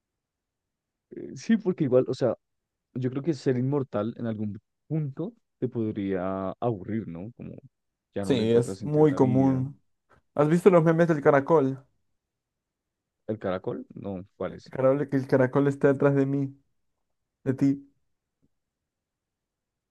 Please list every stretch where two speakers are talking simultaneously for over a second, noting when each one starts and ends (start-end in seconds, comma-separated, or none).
8.2-9.6